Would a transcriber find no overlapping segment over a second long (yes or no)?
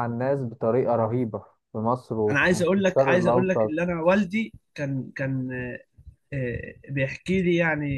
no